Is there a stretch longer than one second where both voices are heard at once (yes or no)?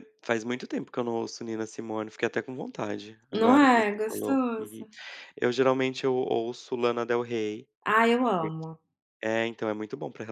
yes